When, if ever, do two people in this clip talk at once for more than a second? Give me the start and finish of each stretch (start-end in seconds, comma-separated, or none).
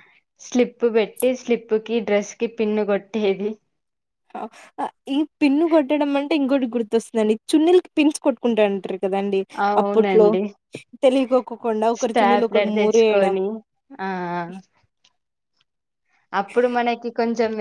12.0-13.4